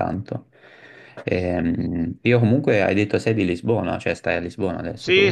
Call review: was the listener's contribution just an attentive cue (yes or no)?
no